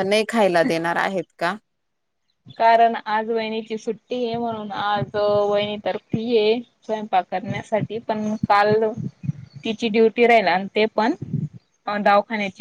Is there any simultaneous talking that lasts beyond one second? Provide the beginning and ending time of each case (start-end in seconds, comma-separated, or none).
none